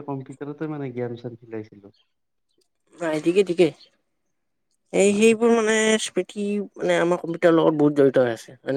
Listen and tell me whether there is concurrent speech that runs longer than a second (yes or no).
no